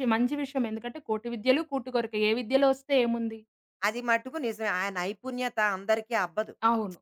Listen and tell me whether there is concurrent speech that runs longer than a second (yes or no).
no